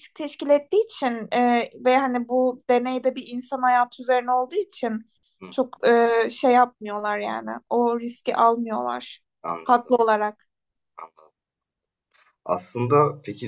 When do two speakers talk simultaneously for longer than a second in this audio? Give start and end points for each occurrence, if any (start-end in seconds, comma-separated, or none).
none